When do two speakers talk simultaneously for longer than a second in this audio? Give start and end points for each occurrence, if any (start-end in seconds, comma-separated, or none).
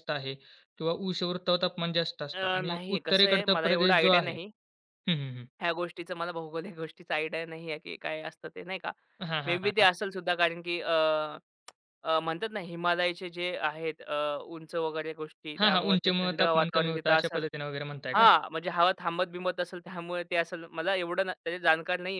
2.3-4.3, 15.6-17.4